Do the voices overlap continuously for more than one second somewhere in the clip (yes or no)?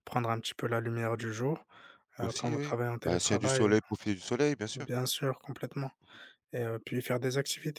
yes